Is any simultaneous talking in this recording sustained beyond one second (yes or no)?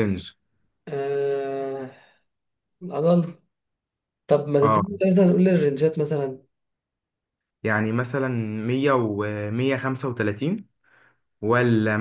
no